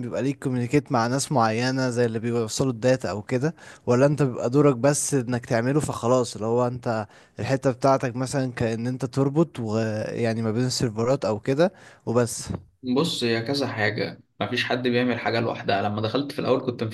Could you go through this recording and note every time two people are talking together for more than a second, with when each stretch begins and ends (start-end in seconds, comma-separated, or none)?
none